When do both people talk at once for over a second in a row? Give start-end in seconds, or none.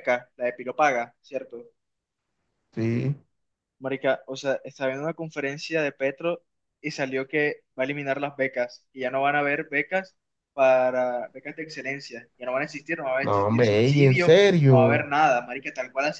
13.2-15.1